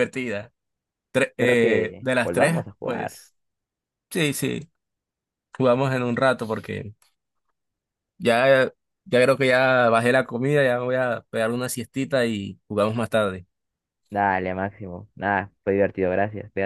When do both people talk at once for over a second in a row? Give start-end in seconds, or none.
1.3-3.2